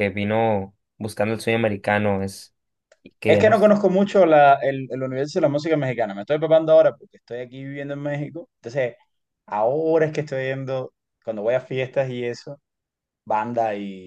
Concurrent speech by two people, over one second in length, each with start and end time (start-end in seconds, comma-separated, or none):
none